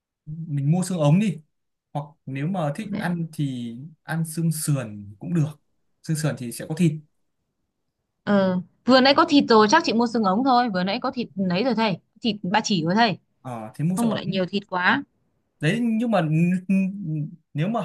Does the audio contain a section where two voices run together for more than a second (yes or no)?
no